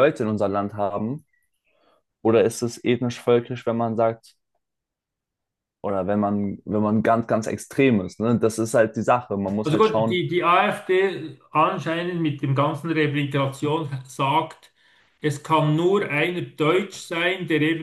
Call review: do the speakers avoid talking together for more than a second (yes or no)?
yes